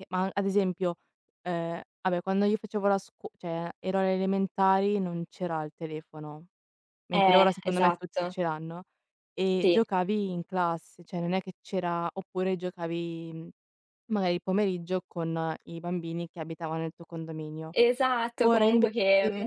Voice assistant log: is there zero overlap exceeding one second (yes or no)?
no